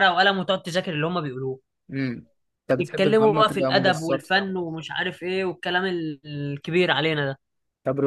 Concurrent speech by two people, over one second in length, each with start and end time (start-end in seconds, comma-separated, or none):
2.8-4.3